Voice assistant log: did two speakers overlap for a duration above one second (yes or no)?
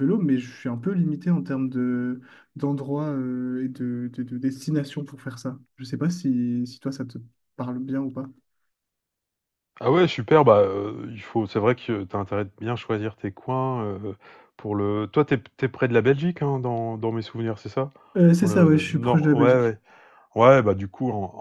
yes